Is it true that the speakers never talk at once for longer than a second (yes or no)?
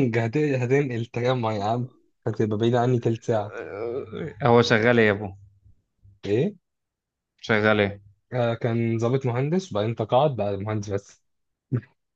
yes